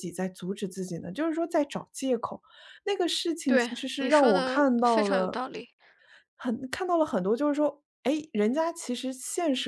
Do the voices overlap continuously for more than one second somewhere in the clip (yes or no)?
yes